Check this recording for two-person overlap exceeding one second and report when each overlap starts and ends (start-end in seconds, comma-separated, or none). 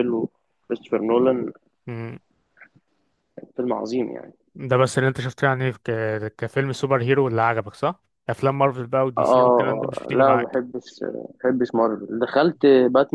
9.2-10.6